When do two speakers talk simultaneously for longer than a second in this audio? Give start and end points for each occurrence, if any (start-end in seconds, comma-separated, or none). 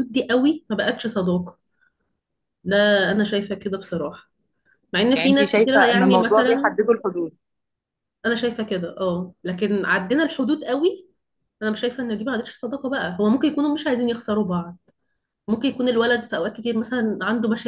5.1-6.7